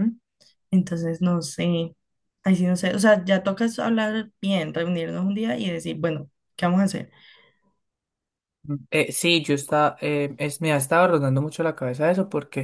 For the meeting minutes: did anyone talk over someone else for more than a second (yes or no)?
no